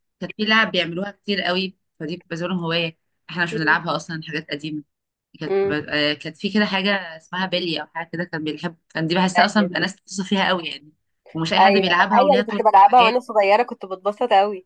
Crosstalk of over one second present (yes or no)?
yes